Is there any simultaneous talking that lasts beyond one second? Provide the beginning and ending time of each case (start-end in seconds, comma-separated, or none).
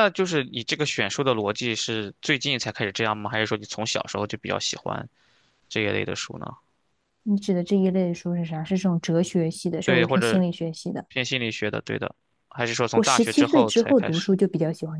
12.9-14.4